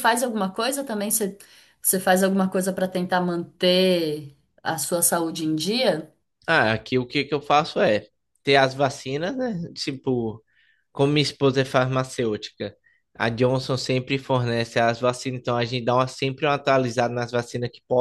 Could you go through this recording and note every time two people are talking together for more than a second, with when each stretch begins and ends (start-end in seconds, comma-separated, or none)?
none